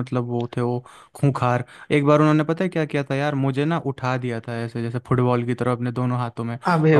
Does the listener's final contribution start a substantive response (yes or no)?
no